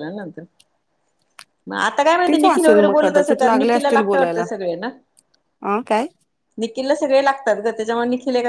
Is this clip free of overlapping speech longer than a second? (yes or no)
no